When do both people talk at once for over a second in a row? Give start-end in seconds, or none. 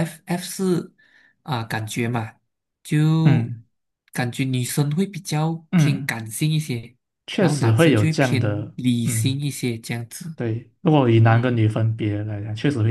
7.4-9.4